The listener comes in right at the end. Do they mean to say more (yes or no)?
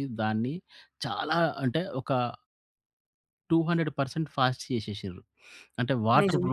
no